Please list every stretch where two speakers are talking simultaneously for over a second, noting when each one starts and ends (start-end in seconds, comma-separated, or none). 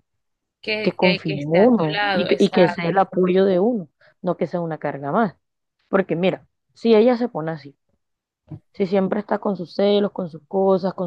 0.8-3.0